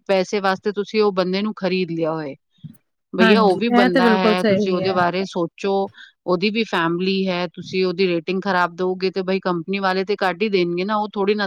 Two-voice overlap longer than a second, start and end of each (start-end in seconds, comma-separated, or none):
3.2-5.0